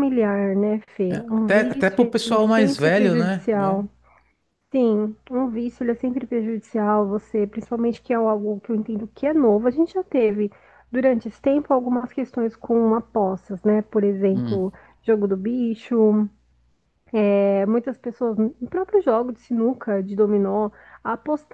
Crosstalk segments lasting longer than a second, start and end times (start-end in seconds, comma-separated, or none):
1.3-3.9